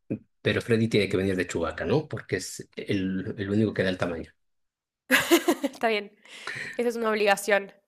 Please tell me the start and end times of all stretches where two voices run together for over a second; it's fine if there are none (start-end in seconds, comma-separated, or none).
none